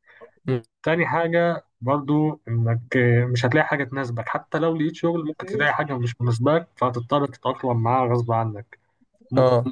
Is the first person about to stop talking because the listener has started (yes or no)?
no